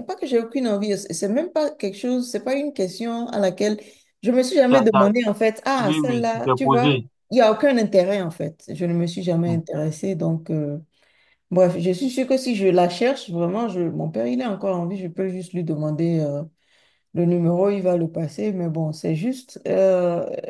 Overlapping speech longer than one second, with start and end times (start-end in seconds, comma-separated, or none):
5.8-7.1